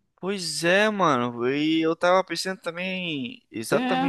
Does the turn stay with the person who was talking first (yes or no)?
yes